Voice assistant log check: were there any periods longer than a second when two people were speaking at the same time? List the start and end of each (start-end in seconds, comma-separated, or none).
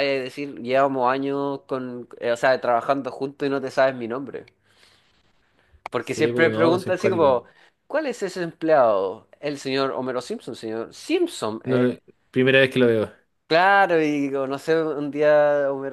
6.0-7.4